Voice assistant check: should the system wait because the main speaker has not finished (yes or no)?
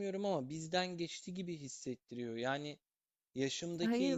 yes